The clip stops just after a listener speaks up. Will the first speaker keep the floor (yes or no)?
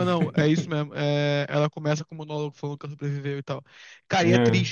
yes